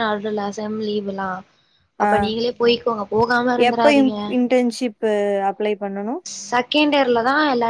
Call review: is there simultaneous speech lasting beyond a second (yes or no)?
no